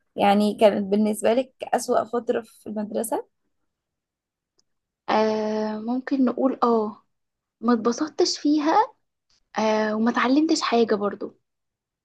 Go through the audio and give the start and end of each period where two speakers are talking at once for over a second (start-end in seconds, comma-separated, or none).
none